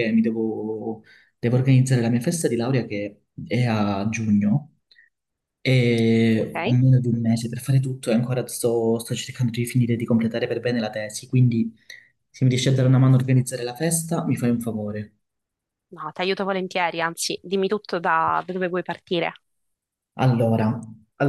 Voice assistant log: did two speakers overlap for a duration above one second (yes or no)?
no